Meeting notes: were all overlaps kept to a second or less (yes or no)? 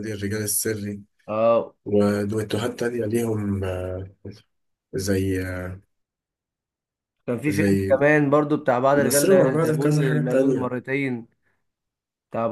no